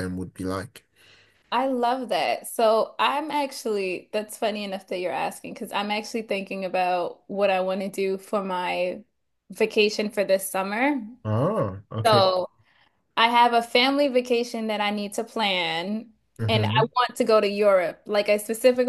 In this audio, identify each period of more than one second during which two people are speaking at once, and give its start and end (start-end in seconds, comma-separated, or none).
none